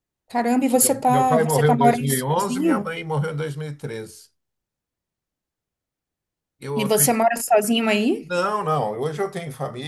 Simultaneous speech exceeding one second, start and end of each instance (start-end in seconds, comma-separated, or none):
0.8-2.9